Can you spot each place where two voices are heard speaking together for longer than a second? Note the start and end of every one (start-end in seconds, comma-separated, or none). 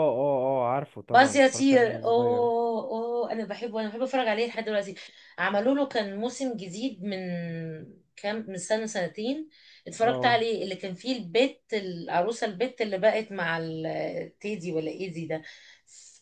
1.1-2.5